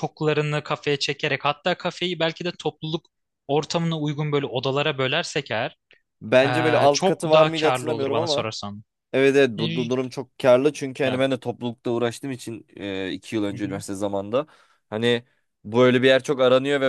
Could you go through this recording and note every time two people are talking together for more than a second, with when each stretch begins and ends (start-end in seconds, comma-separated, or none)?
6.8-8.5